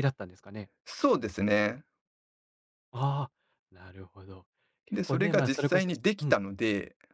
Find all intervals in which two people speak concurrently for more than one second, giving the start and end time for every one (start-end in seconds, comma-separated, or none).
4.9-6.3